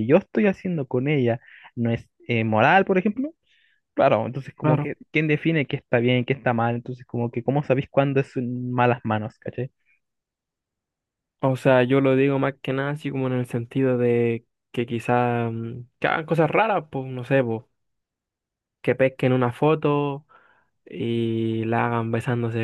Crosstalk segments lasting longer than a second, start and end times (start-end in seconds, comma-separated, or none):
none